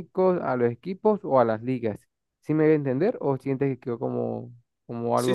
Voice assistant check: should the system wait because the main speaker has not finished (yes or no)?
no